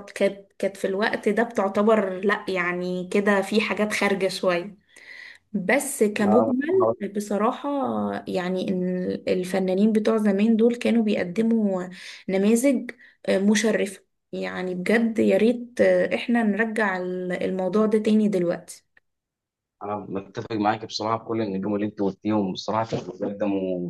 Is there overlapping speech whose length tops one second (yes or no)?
no